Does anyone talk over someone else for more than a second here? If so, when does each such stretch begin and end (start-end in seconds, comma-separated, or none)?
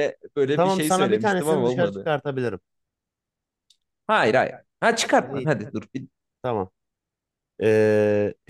0.6-2.1